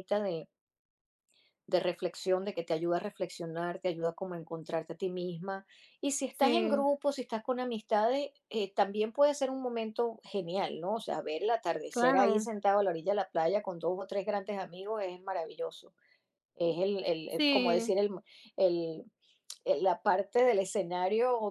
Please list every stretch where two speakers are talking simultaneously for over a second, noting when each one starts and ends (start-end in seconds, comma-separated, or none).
none